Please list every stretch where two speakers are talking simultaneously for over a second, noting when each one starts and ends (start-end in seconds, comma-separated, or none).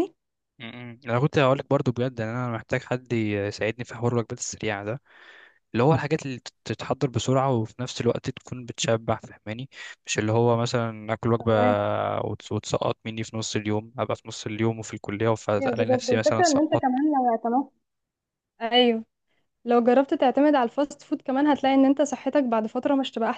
15.6-17.1